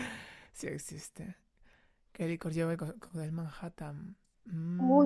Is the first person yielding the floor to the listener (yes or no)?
yes